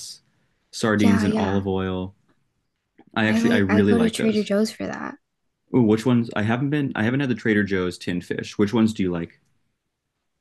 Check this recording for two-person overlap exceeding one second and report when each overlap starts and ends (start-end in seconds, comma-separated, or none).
3.3-4.5